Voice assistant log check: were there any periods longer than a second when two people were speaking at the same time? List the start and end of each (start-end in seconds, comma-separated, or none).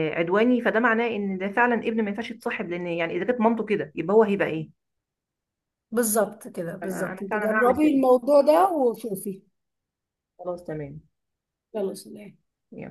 6.8-8.0